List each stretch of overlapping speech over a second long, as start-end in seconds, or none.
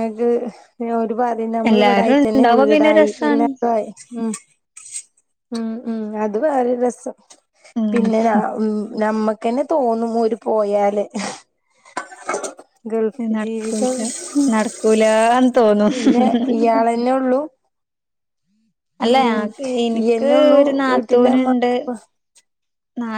1.7-3.5, 20.0-21.7